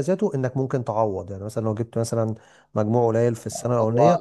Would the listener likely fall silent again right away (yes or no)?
no